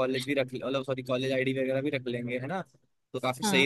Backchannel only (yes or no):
no